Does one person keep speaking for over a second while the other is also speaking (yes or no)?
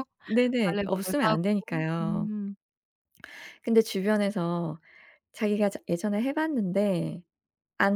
yes